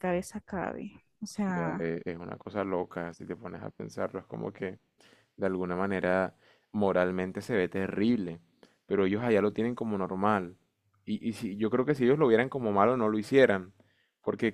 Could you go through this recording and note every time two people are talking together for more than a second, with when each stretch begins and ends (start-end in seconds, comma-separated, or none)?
none